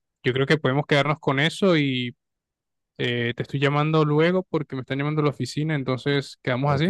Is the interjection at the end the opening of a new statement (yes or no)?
yes